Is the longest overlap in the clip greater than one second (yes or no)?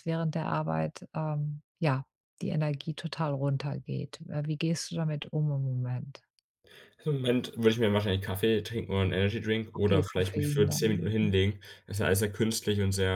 yes